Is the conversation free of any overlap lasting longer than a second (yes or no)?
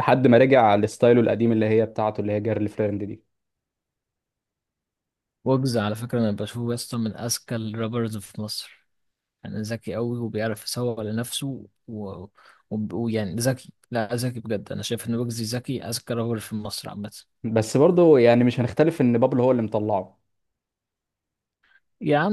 yes